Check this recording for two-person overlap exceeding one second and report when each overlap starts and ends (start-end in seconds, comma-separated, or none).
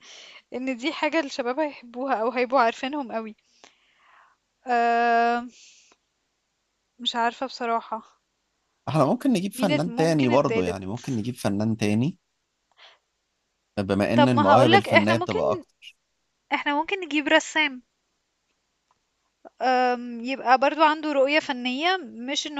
9.5-10.8, 14.2-15.4